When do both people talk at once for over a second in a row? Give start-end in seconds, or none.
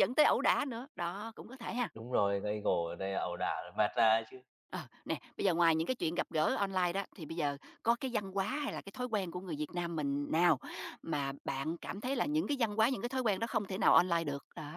none